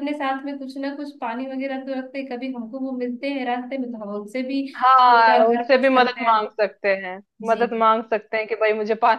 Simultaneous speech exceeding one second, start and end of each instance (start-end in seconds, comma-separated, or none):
5.2-6.5